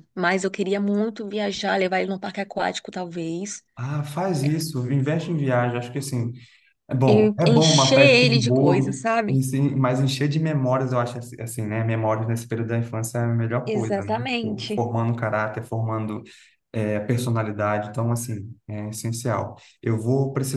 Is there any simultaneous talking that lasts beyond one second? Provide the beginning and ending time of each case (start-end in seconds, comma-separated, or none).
7.5-9.5, 13.7-14.9